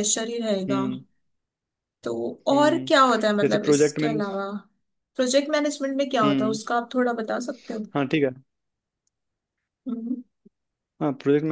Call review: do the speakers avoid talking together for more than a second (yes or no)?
no